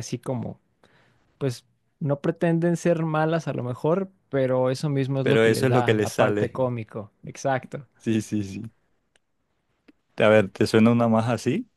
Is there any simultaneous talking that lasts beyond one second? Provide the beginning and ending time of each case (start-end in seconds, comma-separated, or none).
5.2-6.5